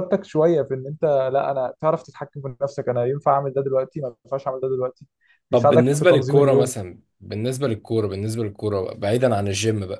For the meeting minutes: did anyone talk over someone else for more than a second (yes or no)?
yes